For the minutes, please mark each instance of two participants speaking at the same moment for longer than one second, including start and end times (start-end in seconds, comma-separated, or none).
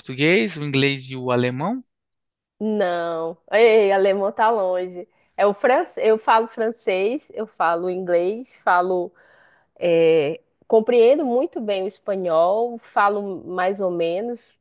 none